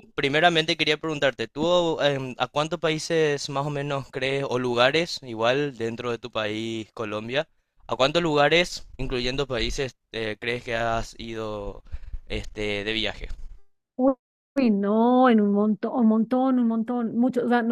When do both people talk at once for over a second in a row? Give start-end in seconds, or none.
none